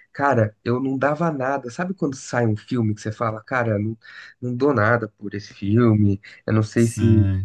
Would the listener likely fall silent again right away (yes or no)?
yes